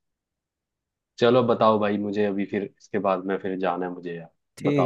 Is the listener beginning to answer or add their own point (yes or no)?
yes